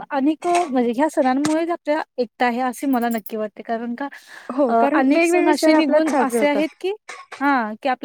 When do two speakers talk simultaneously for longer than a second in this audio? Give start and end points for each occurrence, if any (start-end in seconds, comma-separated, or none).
4.7-6.7